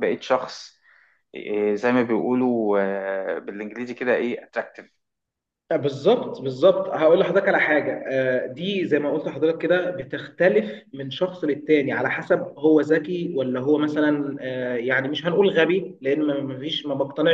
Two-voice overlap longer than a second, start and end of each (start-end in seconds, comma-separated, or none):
none